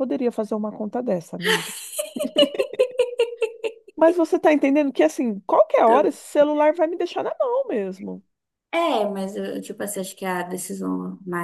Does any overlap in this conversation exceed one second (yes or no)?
no